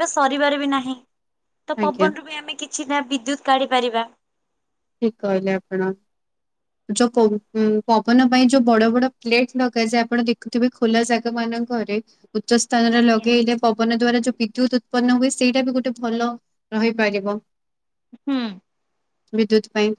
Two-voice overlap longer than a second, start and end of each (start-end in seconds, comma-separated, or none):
none